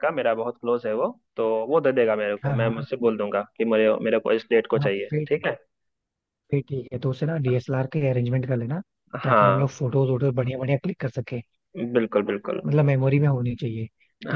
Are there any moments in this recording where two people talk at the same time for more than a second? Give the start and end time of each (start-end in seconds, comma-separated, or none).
none